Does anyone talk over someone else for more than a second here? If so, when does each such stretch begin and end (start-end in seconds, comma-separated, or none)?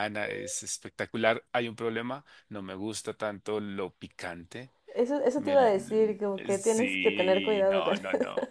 6.5-8.0